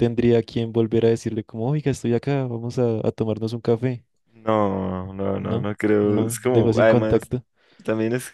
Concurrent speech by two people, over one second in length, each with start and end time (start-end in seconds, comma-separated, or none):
5.4-7.3